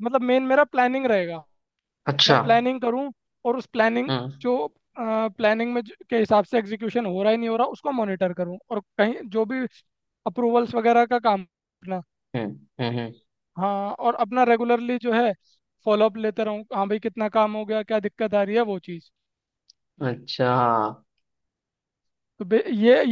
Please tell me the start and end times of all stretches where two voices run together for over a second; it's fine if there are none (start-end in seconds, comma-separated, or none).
none